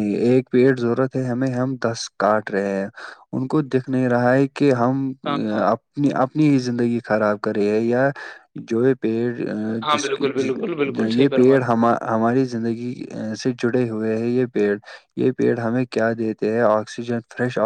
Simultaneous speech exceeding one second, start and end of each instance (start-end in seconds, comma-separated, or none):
9.9-11.7